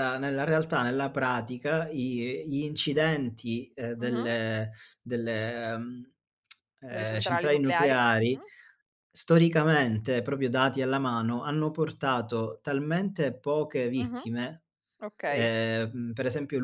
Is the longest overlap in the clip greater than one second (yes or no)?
yes